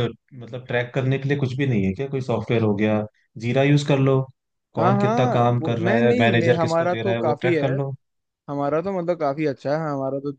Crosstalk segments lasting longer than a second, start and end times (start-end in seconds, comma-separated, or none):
4.8-7.7